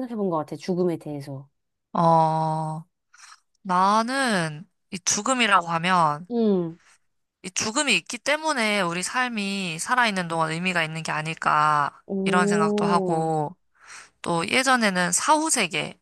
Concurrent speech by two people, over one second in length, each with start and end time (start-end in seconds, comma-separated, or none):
12.1-13.3